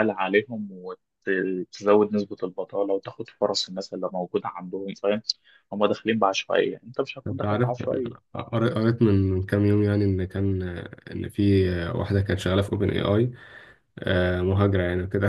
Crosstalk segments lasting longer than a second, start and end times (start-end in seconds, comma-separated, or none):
none